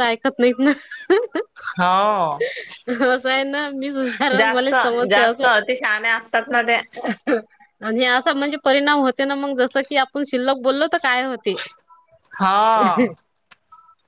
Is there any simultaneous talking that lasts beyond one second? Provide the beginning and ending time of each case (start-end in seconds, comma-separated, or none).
none